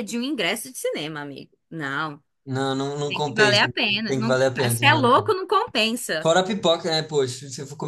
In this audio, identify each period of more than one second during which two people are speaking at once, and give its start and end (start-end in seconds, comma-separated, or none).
3.1-5.3